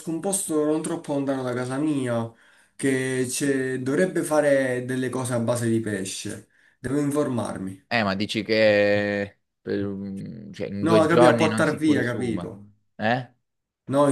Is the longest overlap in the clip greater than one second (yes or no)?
yes